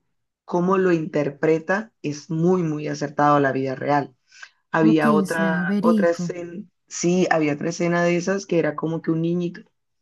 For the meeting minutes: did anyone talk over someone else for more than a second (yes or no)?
yes